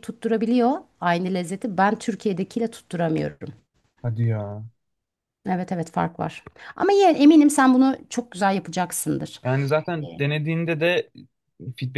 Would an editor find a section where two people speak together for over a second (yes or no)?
no